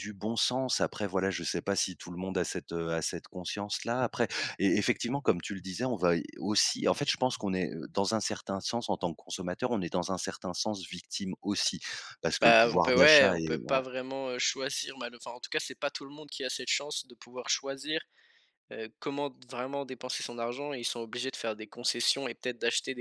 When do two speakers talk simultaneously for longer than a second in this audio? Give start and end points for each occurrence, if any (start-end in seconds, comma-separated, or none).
12.4-13.8